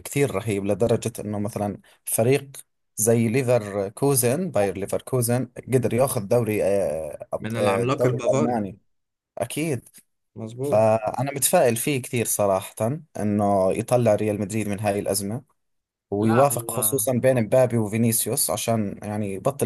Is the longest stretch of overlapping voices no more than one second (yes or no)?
no